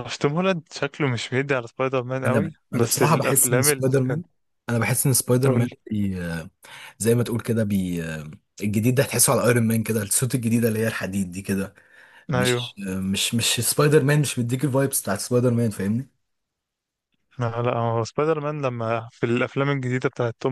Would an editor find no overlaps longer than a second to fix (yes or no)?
no